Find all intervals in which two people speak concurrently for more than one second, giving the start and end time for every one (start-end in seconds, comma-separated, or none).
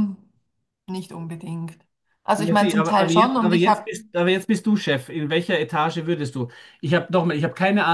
2.4-3.9